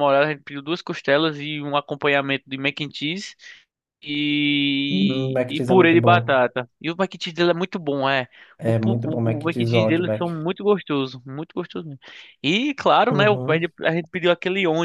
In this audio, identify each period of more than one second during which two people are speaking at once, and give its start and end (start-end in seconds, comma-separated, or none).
4.9-6.4, 8.6-10.3